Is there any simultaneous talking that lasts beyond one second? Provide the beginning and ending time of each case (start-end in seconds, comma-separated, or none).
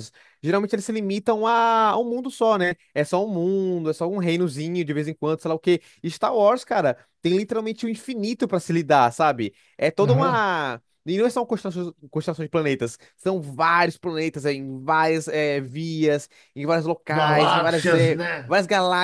17.1-18.5